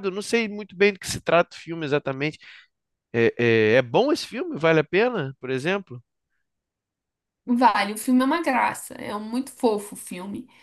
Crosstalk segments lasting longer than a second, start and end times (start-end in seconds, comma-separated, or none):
none